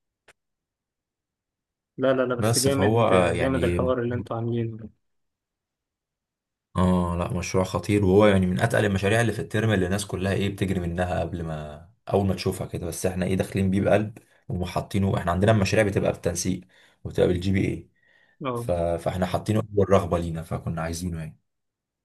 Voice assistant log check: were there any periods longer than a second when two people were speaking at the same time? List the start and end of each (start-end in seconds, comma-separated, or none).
2.4-3.8